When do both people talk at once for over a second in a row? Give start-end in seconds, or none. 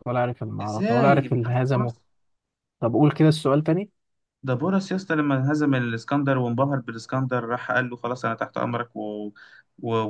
0.6-1.9